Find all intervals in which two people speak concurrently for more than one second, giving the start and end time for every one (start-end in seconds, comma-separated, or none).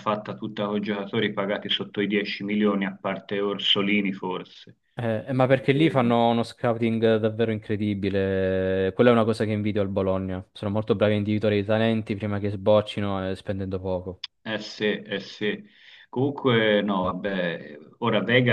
none